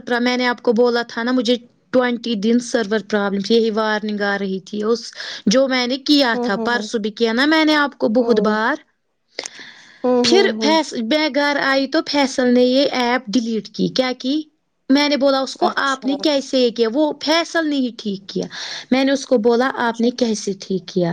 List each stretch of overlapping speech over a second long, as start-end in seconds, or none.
none